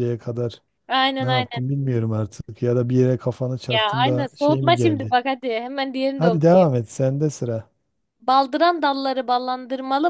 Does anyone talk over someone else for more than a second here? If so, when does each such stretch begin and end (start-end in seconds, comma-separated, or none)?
3.7-5.2